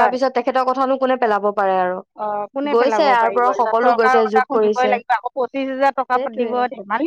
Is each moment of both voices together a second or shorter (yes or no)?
no